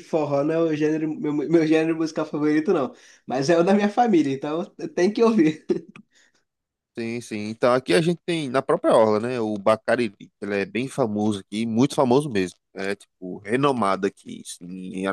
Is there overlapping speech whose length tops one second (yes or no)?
no